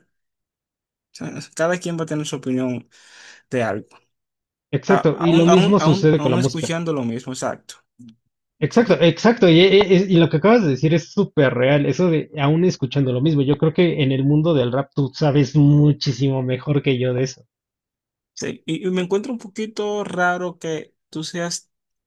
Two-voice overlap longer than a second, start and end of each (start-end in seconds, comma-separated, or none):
4.9-6.7